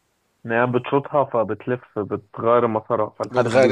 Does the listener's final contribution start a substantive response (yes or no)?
yes